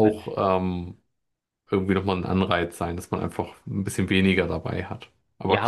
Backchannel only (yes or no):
no